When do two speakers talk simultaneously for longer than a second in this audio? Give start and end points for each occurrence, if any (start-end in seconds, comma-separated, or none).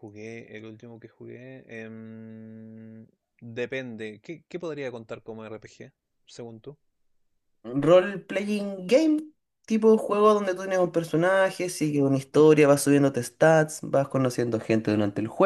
none